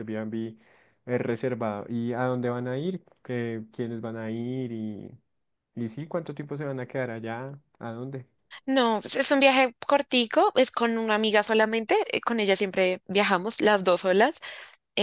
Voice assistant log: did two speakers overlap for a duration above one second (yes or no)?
no